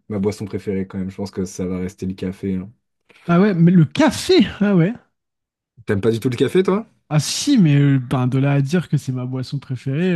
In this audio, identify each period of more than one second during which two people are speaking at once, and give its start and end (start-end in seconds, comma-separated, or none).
none